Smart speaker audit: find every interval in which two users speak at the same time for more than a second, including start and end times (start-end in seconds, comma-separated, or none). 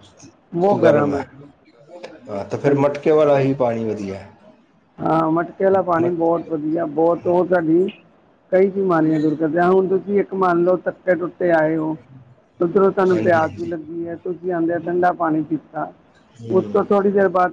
none